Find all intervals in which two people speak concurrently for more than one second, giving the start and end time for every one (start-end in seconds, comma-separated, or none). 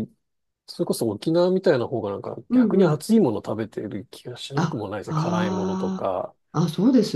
4.5-6.1